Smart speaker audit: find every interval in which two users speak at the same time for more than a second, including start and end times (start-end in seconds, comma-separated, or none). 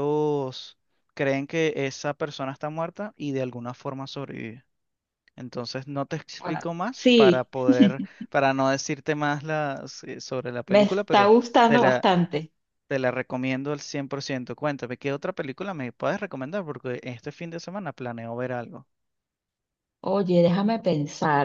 10.7-12.1